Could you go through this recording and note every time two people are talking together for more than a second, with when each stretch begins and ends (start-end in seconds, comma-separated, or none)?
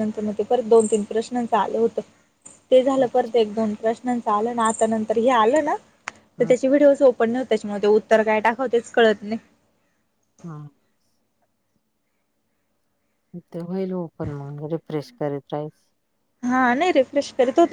none